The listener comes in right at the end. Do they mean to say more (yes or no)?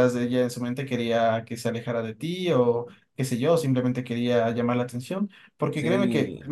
no